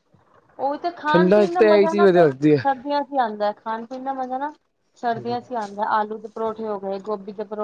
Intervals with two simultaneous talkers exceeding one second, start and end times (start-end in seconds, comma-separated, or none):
1.1-2.7